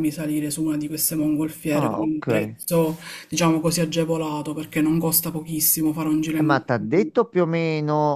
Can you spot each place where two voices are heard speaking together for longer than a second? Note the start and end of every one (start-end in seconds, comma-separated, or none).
none